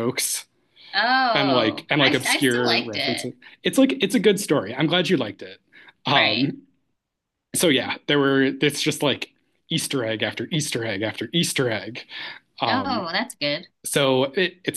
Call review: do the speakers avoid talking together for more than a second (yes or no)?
no